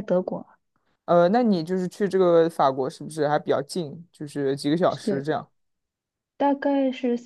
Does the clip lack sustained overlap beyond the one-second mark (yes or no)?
yes